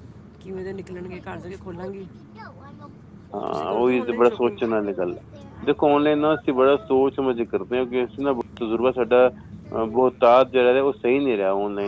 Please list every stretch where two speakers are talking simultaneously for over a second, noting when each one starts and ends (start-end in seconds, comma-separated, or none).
none